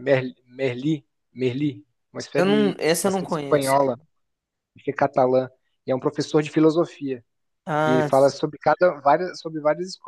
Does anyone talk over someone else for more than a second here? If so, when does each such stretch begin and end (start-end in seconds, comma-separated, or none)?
2.3-3.7